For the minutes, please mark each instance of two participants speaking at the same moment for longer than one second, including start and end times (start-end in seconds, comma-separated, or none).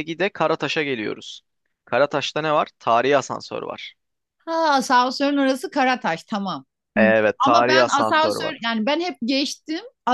7.0-8.6